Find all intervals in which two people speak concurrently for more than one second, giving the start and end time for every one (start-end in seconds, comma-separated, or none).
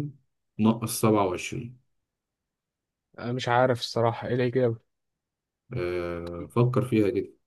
none